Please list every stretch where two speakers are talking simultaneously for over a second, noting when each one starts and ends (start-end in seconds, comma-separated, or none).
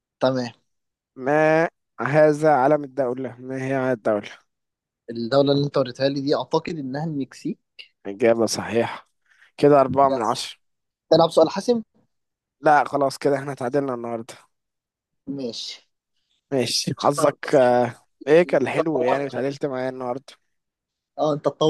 18.3-19.6